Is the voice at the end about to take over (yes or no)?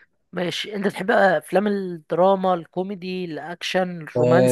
yes